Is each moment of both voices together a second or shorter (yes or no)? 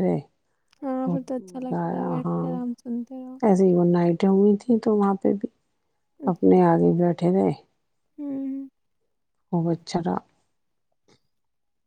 no